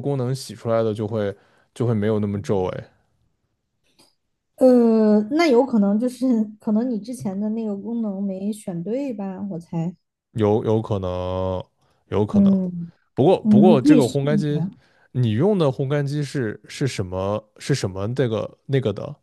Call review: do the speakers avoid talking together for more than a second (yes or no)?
no